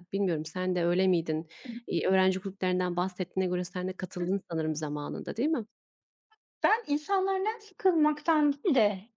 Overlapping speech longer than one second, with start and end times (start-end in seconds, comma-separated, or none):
none